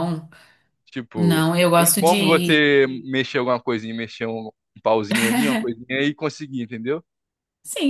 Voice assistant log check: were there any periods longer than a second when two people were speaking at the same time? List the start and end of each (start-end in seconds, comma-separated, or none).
1.1-2.6